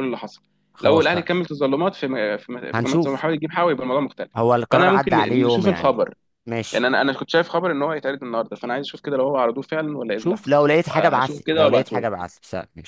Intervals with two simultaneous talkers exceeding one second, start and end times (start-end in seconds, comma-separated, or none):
4.7-6.0, 10.2-12.1